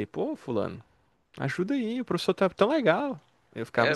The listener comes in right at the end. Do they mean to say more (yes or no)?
yes